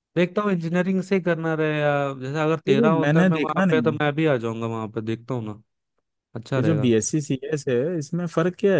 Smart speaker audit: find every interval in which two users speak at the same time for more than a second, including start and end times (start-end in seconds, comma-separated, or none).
2.7-4.0